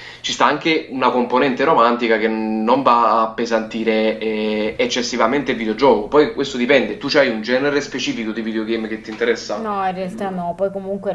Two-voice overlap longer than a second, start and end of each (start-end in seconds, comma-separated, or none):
none